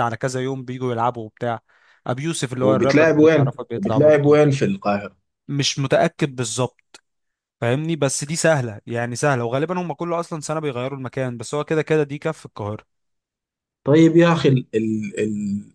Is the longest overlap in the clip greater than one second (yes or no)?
yes